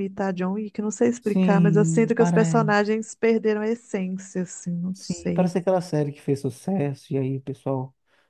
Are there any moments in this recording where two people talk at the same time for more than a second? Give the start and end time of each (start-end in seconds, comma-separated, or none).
1.2-2.7